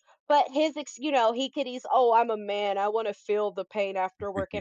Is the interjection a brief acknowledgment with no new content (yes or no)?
yes